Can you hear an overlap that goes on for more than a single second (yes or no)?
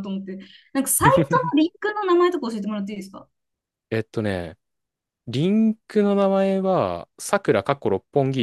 no